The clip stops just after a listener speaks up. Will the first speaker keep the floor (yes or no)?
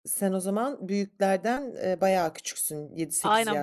no